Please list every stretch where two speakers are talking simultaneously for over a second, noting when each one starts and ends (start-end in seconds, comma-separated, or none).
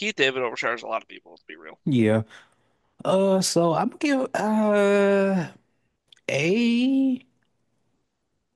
none